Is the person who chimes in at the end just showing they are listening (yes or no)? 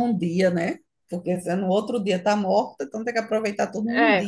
no